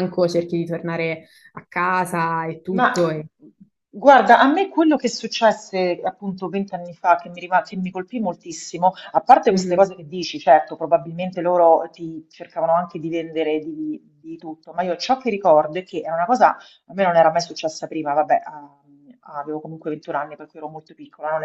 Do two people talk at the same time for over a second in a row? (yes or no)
no